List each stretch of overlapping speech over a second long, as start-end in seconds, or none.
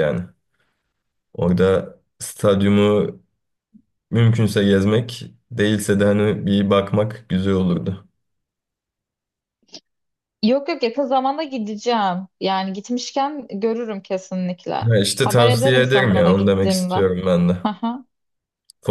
14.9-16.9